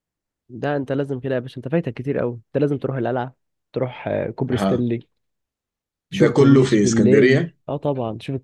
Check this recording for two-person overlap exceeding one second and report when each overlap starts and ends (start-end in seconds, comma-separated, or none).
6.1-7.6